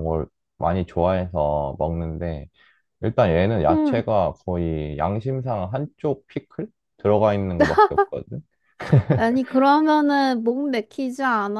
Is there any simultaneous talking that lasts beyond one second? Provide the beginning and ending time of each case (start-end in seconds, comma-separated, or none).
none